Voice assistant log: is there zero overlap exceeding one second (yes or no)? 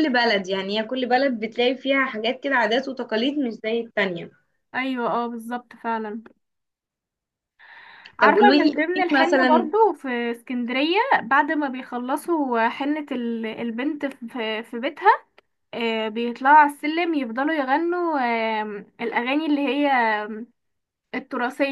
no